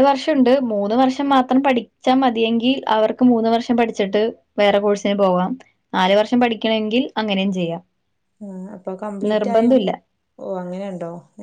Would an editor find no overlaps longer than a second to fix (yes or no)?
yes